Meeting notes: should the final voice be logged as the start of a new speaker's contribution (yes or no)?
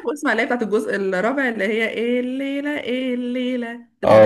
yes